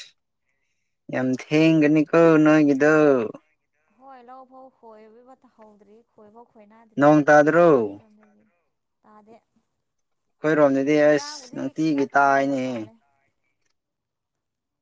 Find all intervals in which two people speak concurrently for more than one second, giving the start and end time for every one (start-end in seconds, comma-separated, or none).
11.0-12.9